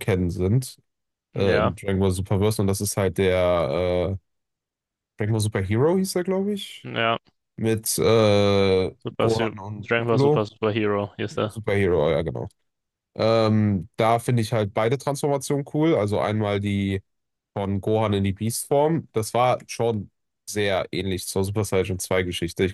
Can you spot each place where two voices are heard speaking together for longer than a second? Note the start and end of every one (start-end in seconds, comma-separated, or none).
9.0-10.4